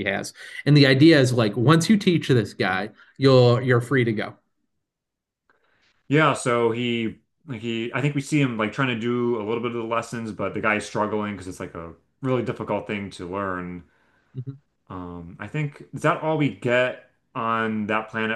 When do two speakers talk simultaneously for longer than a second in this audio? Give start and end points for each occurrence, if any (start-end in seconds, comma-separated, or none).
none